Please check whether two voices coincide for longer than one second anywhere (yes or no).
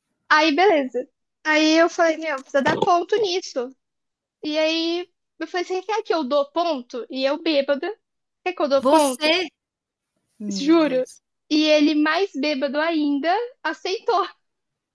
no